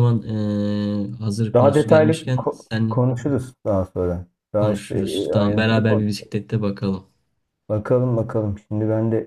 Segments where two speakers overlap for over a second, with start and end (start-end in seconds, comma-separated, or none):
1.5-3.0, 4.6-6.1